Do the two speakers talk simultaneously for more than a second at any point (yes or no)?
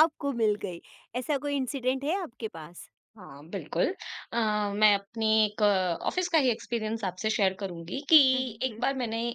no